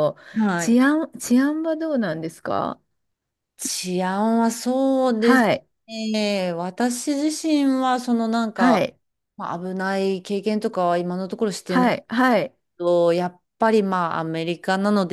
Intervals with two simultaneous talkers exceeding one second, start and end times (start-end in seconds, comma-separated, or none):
none